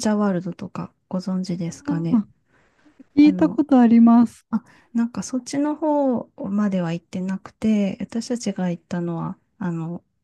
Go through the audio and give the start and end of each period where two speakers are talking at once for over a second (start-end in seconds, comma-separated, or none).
none